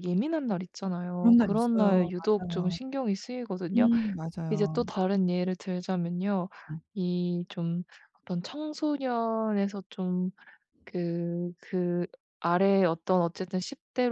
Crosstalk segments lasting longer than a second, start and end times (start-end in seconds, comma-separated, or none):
1.2-2.8